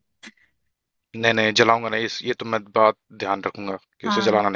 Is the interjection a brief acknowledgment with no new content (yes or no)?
no